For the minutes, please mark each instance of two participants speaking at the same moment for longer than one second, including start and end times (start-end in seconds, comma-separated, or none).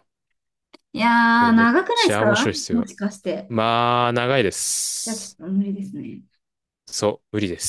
1.3-2.9